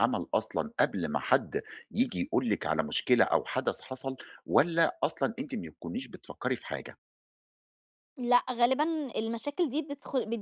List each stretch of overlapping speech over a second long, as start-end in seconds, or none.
none